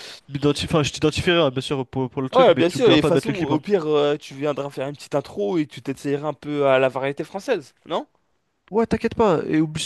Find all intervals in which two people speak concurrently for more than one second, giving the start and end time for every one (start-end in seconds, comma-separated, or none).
2.3-3.6